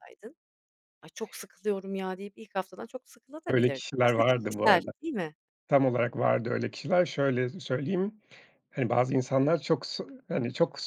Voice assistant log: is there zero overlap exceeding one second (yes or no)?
no